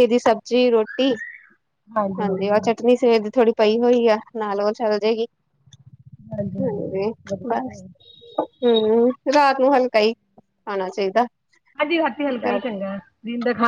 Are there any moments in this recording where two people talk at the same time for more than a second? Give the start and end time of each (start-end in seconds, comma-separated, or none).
none